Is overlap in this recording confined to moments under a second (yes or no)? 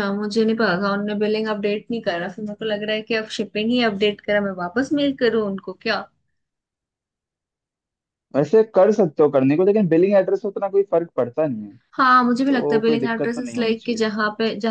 no